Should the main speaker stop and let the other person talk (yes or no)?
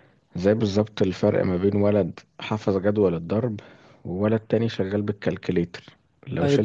no